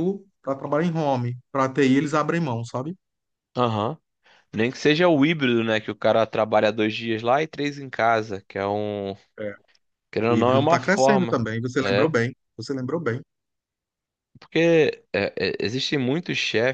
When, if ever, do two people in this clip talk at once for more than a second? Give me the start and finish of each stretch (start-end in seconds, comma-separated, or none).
10.3-12.1